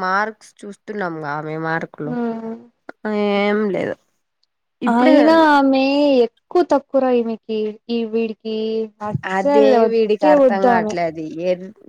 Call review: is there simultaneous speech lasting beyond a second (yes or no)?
yes